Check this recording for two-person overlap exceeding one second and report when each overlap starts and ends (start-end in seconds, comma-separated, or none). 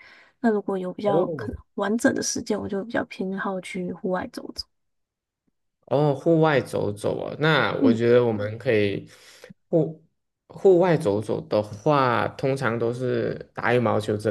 none